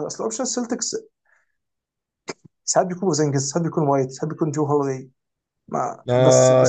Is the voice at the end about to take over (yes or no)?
yes